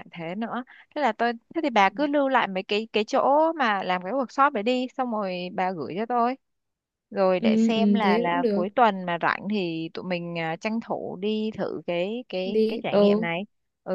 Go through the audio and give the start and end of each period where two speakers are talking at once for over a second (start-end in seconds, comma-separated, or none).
7.4-8.7